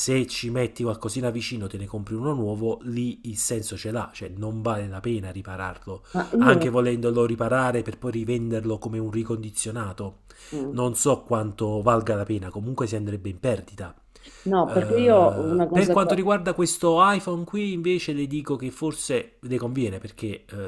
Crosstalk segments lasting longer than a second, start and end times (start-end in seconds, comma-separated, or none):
14.7-16.2